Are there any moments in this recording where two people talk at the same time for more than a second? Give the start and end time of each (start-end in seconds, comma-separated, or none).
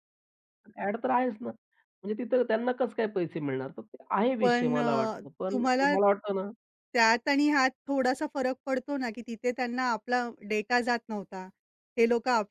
none